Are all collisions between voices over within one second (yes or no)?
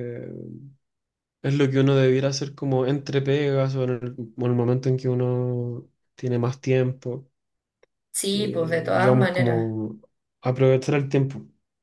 no